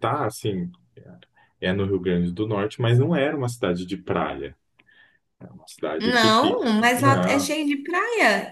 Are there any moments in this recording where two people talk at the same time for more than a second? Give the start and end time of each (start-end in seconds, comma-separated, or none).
6.0-7.5